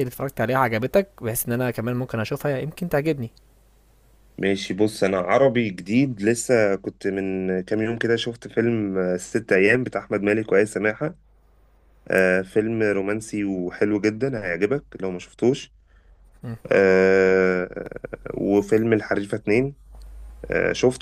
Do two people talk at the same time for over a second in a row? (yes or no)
no